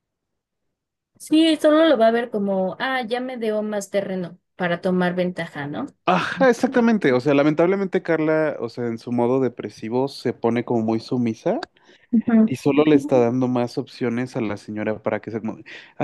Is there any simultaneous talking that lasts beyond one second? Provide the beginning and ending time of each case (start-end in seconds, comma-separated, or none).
none